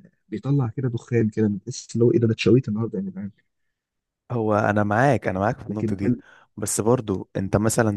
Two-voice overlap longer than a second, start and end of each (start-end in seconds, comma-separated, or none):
none